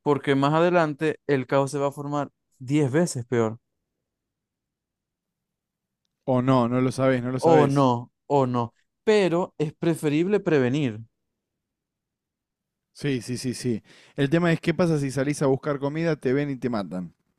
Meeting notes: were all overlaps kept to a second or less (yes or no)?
yes